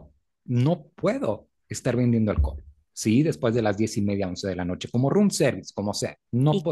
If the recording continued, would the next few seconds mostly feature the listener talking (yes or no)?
yes